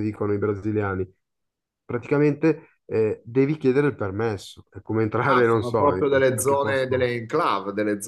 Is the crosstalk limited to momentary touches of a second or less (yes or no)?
no